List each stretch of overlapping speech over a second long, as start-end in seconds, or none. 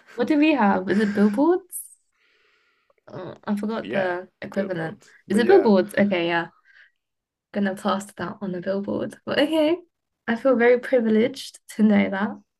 3.8-5.7